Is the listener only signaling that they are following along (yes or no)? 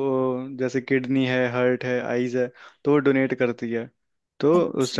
yes